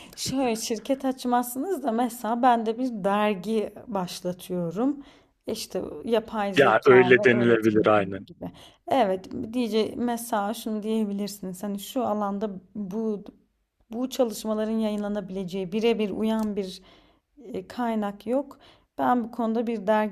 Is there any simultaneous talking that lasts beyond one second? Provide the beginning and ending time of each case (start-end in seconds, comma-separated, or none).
6.6-8.3